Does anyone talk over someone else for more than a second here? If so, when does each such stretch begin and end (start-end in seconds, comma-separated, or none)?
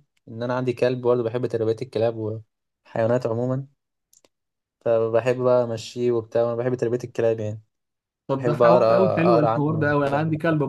8.3-9.9